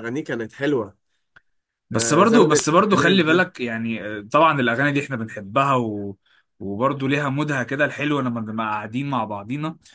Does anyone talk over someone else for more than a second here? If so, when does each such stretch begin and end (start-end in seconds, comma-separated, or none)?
1.9-3.5